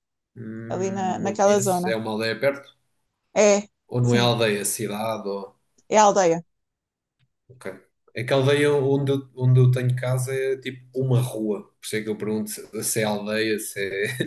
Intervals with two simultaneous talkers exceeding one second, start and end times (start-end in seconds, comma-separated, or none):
0.7-2.0